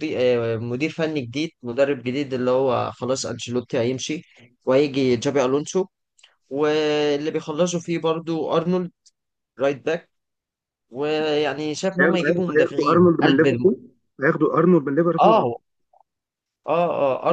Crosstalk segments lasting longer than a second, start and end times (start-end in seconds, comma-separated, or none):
12.0-13.7